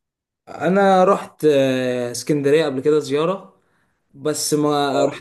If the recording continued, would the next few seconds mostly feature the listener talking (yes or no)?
no